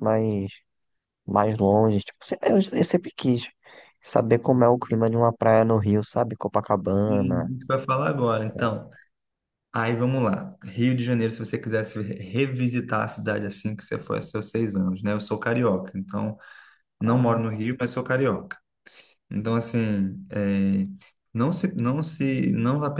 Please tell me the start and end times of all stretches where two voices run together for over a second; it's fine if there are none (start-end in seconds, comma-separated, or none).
none